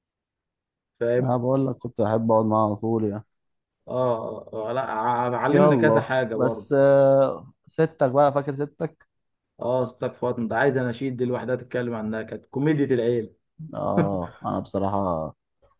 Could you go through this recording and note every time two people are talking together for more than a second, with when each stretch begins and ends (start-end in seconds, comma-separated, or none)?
5.5-6.7